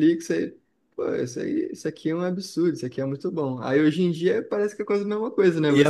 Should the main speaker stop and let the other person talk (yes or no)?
yes